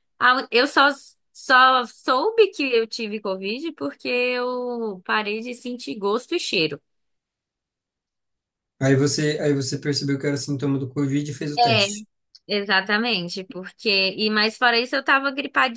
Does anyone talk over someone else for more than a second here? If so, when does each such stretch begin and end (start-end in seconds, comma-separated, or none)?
none